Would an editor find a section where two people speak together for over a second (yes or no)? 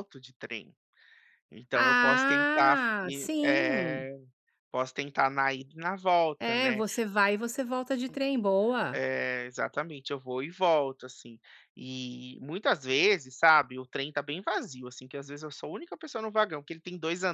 yes